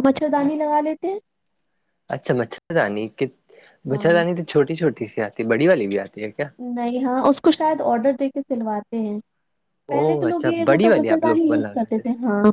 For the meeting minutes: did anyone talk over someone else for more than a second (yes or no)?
yes